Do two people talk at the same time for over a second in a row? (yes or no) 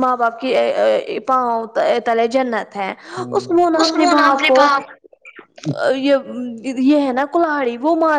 yes